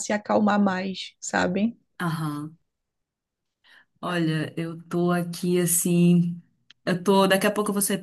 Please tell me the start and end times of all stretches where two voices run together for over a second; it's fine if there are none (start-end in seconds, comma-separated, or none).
none